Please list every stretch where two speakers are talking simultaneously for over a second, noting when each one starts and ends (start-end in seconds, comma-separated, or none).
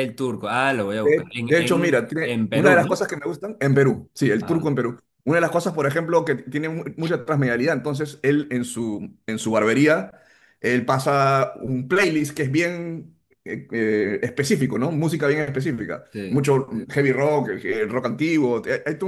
0.9-3.1